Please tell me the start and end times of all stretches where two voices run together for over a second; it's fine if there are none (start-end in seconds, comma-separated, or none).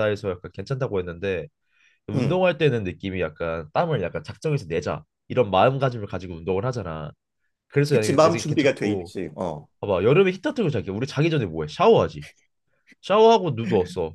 7.9-9.1